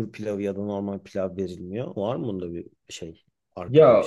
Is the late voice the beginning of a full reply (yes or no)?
yes